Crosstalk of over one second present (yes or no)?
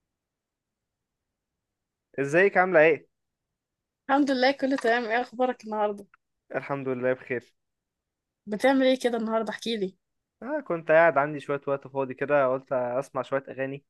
no